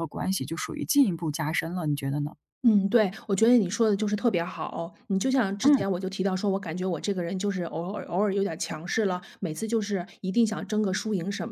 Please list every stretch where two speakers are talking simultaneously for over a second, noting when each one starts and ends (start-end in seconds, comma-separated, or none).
none